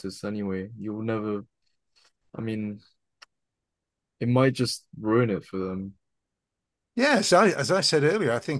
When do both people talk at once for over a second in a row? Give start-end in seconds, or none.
none